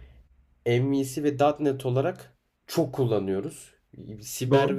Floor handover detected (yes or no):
no